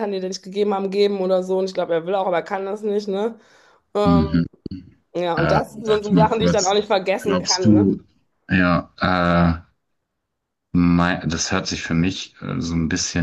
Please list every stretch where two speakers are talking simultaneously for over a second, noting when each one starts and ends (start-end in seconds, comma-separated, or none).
5.3-7.9